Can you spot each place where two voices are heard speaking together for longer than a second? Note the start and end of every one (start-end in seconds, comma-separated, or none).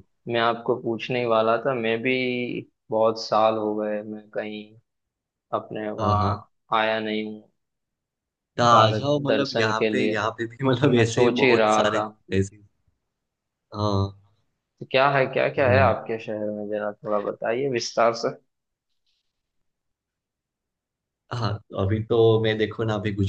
8.7-12.1